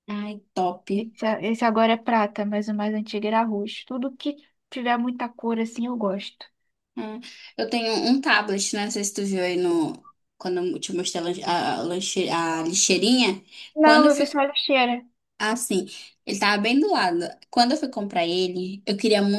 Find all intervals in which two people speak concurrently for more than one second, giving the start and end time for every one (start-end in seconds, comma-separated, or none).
none